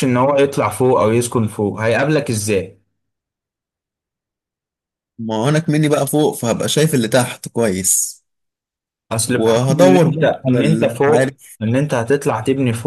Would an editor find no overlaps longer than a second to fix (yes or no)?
no